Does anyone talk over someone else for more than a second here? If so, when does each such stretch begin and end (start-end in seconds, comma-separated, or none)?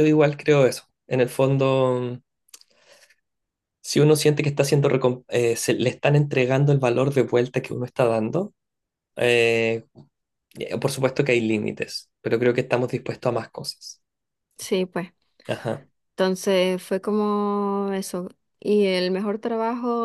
none